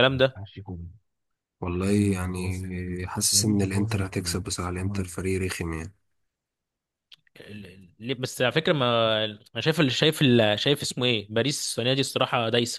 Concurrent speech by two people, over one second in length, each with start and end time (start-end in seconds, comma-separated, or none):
none